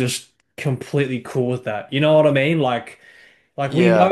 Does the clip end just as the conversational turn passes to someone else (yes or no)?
no